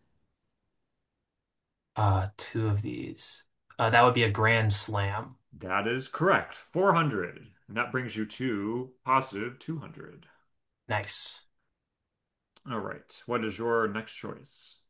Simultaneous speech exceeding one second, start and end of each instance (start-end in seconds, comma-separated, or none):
none